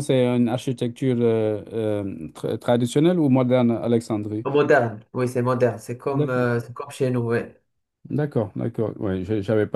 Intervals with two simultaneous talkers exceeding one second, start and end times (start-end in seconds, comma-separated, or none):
none